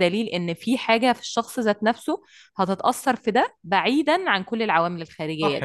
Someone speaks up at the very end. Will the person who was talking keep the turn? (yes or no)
no